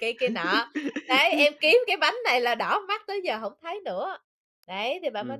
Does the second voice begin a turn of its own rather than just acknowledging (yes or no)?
yes